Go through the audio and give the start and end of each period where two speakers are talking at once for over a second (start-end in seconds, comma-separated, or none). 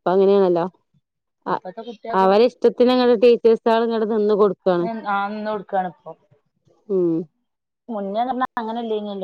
none